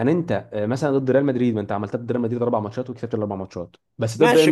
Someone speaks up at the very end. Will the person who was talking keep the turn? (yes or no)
no